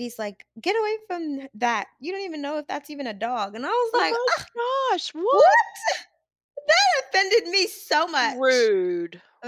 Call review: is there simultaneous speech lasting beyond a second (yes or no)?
no